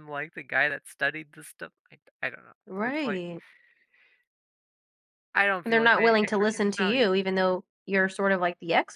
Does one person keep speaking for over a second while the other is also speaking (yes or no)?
yes